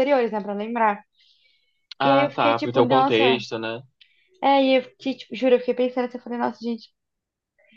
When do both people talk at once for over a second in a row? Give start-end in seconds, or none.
2.0-3.4